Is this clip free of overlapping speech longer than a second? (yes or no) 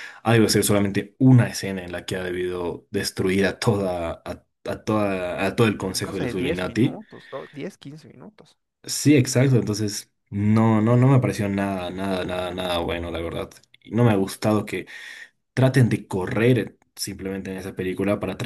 no